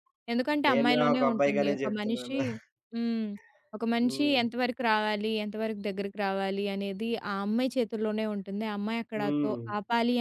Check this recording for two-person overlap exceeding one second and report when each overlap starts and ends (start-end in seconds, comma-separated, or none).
0.7-2.4